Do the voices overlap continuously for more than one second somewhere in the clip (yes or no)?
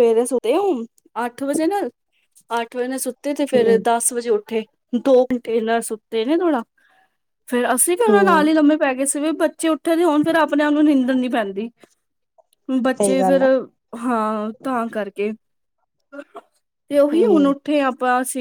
no